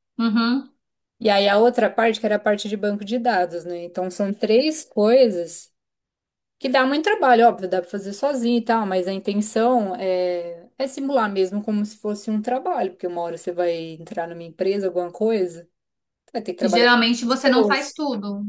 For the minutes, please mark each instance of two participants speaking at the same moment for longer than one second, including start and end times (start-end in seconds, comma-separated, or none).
16.6-17.9